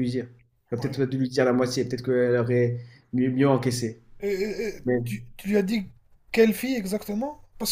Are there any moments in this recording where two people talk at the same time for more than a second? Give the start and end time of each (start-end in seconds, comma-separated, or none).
none